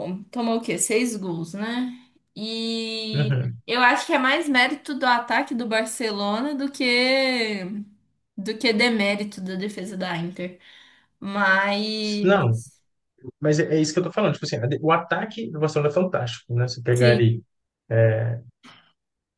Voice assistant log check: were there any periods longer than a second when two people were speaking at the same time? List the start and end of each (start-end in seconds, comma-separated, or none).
none